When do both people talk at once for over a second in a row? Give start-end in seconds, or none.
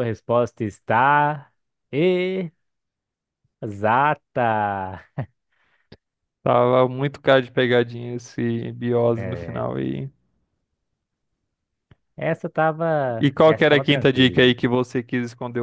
13.2-14.5